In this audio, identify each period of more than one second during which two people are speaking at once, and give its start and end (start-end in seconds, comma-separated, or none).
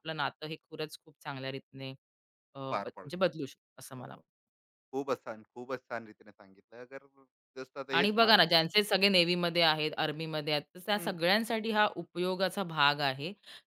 none